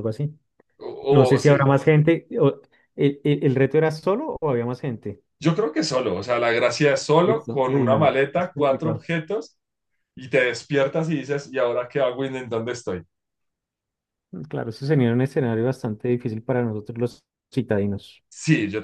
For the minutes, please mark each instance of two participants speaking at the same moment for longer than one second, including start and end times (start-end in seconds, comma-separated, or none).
7.2-9.1